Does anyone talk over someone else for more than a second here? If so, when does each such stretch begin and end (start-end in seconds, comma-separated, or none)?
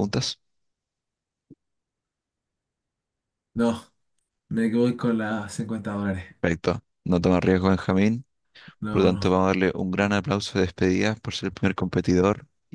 none